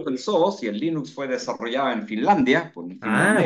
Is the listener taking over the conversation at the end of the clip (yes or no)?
yes